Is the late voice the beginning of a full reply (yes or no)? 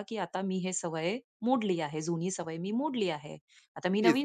no